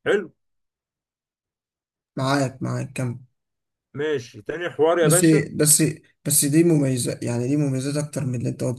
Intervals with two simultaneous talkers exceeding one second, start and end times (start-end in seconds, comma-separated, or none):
none